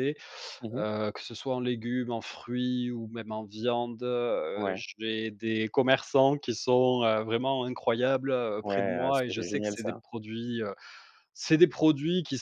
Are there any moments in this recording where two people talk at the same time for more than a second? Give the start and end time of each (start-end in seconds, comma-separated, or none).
8.6-10.0